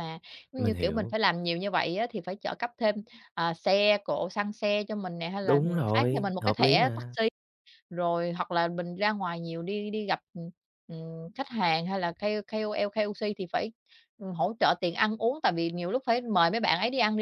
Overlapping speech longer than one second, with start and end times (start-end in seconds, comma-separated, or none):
5.4-7.1